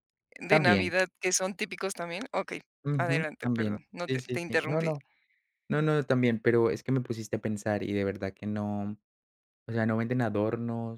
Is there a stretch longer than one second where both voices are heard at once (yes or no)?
yes